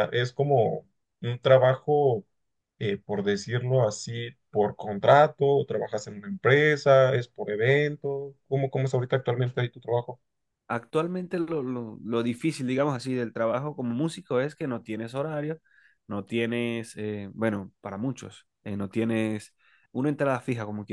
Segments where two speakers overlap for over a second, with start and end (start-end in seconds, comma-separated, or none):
none